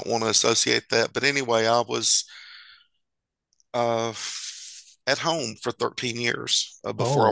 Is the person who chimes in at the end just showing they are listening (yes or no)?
yes